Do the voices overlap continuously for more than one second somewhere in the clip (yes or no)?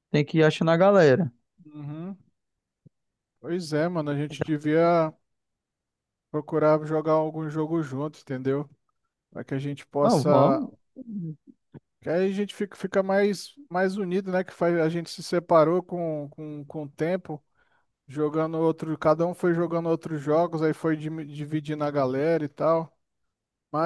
no